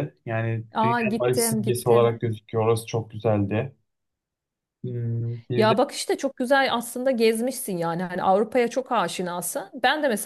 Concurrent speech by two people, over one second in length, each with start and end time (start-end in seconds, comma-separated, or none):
0.8-2.1